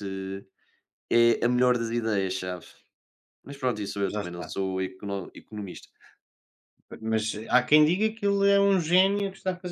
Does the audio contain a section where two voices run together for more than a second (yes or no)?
no